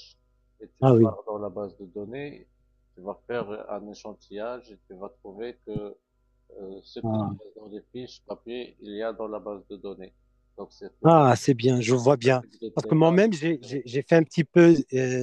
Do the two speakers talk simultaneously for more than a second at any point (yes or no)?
yes